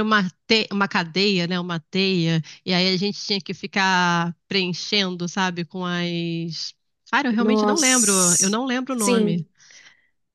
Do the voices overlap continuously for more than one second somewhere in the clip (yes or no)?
yes